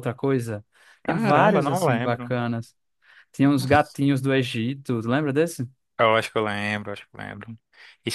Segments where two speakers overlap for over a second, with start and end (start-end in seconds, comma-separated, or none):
1.0-2.4